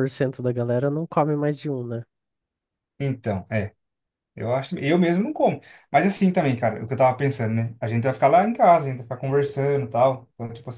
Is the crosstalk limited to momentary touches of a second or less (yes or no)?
yes